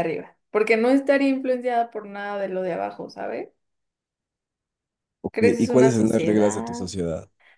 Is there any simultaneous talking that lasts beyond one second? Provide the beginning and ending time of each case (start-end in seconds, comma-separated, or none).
5.3-6.8